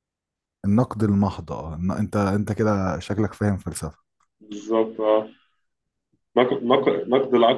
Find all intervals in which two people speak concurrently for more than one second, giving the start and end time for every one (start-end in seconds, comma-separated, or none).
none